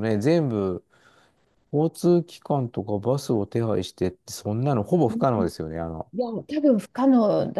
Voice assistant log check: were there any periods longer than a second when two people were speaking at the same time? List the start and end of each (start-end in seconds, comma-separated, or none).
none